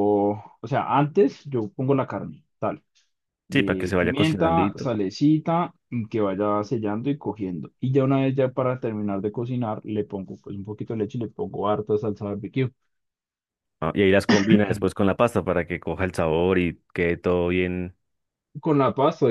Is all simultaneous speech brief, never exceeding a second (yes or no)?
no